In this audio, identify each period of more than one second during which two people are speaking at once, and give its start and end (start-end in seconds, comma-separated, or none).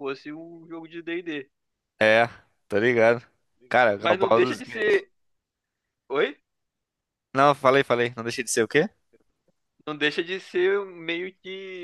3.7-5.0